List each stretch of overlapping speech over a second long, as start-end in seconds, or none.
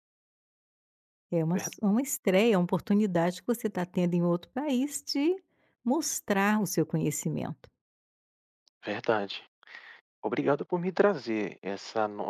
none